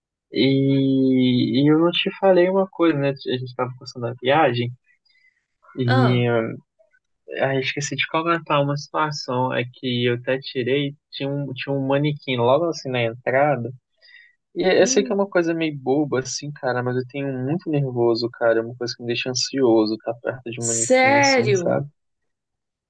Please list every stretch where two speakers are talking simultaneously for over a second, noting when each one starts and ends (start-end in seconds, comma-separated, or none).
20.6-21.8